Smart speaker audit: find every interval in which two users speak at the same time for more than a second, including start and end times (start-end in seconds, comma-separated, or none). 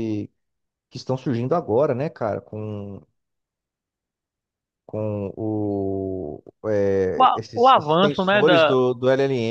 7.2-8.7